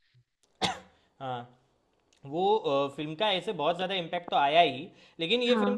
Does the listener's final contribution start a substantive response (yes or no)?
no